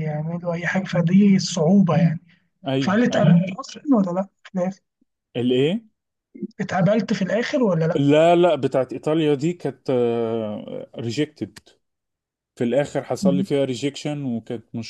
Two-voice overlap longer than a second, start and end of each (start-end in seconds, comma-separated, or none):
none